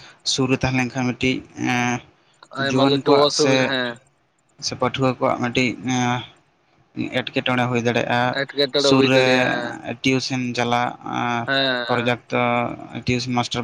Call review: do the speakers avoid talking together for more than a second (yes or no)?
yes